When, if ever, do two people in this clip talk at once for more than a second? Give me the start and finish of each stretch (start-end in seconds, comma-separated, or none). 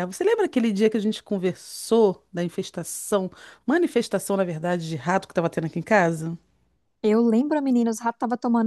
none